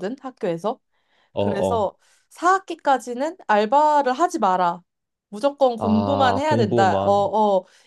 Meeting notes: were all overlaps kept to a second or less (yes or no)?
no